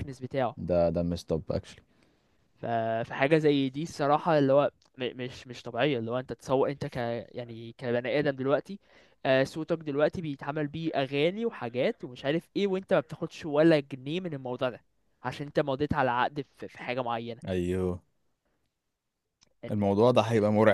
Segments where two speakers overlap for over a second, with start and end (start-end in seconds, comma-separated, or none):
none